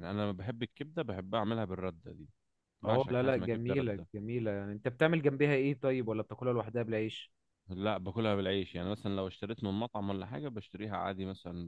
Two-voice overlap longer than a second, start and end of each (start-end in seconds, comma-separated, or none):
2.9-4.1